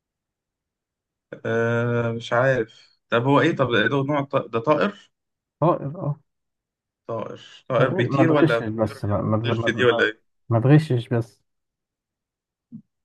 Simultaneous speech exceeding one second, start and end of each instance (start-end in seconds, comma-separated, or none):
7.8-10.1